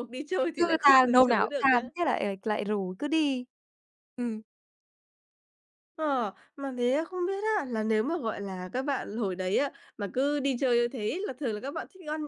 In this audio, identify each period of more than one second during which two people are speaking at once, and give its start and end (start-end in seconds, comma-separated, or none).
0.6-1.8